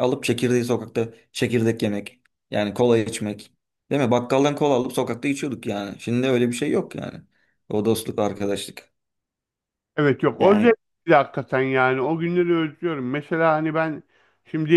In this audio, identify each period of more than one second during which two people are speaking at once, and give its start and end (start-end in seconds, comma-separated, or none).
none